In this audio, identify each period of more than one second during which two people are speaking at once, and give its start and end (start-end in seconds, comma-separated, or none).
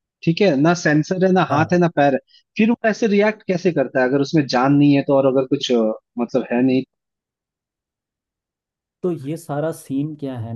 none